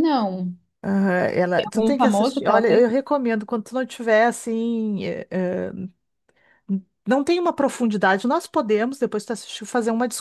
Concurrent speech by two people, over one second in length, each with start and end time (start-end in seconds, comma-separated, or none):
1.6-2.9